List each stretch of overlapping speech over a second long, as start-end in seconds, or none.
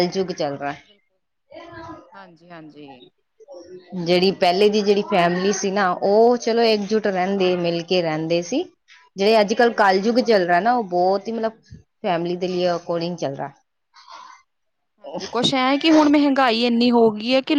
none